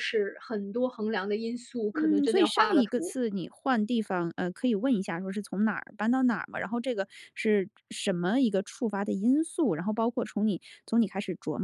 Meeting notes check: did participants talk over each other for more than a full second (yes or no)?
yes